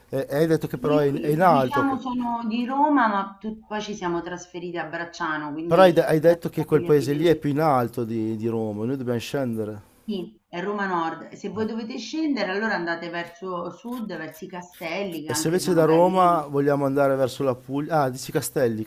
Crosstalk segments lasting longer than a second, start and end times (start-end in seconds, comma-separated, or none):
0.8-2.0, 5.7-7.4, 15.2-16.4